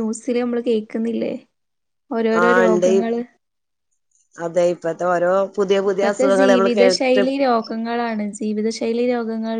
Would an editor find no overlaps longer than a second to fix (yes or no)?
no